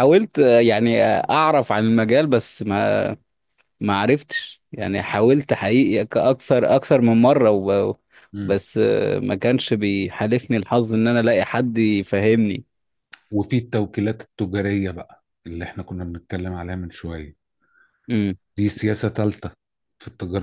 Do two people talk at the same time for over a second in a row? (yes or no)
no